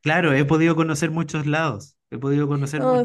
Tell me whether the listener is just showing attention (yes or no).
yes